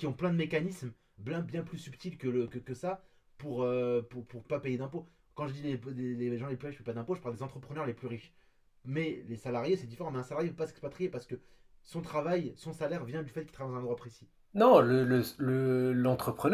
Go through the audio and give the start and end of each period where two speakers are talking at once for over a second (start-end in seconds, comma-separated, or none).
none